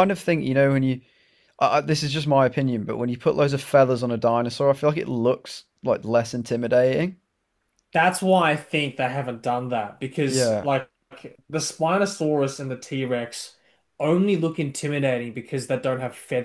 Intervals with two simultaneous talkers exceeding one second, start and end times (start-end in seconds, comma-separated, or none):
none